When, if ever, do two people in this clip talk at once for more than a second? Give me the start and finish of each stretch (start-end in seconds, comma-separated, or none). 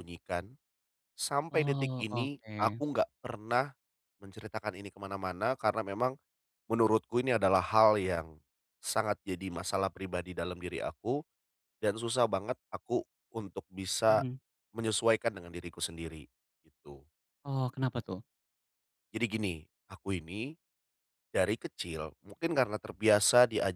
1.5-2.8